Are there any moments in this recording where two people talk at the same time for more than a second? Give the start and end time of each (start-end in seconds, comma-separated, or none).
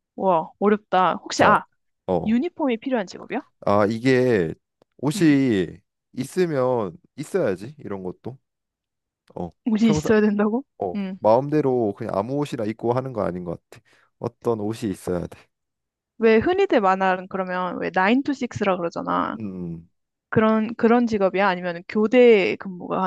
none